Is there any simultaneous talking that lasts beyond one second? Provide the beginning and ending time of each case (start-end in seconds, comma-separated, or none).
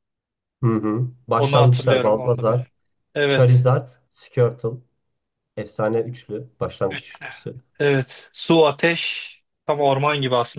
1.4-2.6